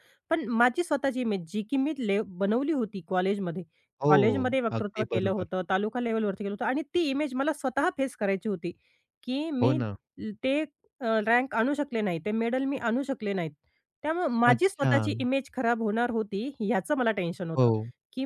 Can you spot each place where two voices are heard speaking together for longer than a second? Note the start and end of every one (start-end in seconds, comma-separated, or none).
4.1-5.5